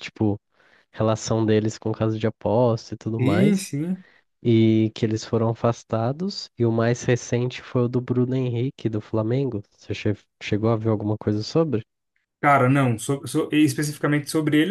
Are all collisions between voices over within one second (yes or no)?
yes